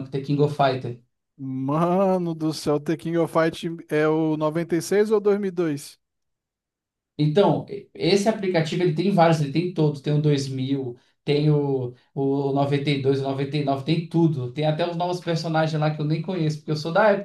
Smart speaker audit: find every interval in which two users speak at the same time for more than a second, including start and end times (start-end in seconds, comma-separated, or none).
none